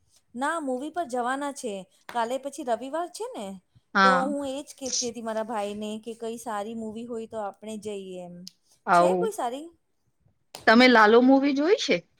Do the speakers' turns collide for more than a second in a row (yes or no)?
no